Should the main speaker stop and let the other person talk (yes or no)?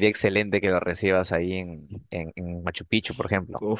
yes